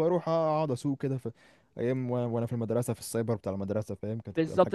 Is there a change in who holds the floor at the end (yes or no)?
yes